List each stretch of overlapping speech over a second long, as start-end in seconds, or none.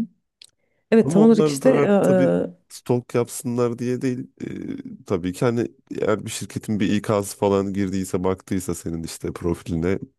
1.0-2.6